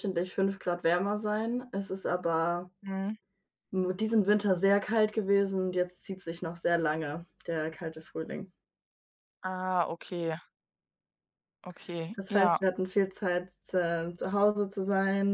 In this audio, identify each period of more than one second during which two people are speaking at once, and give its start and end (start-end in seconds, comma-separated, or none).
none